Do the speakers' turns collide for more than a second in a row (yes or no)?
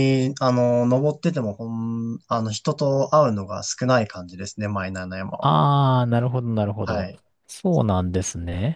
no